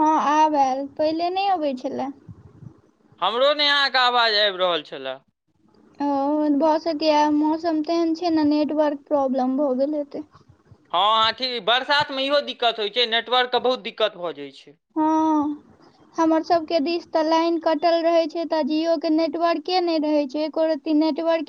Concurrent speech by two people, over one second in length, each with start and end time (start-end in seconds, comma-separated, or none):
none